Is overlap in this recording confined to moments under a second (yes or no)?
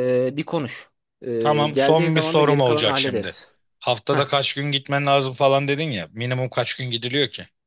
no